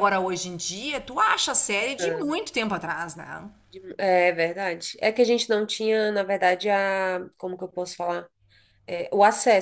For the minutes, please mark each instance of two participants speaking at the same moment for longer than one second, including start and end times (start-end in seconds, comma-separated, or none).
none